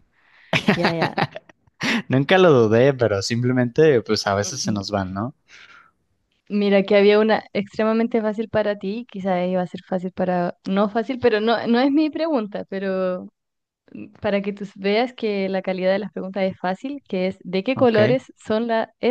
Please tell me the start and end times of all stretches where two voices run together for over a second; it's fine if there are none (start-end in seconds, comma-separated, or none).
none